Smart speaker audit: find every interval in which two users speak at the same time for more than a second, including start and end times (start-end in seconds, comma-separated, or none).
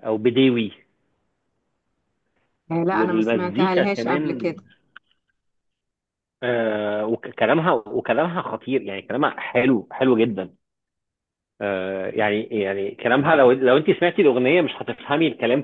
2.9-4.5